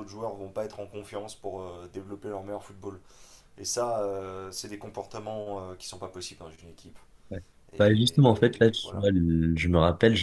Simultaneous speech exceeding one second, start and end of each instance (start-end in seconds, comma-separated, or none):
7.8-9.1